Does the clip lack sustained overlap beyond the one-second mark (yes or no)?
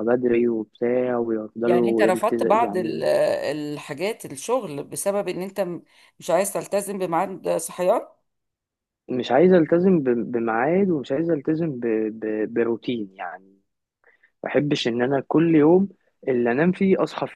no